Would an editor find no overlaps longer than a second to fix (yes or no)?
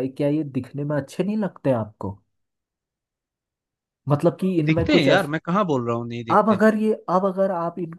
yes